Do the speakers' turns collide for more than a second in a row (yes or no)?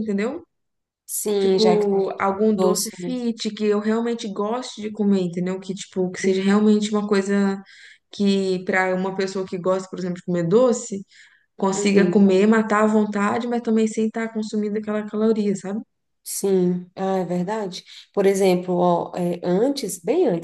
yes